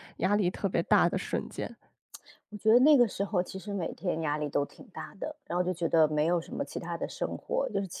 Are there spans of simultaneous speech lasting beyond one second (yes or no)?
no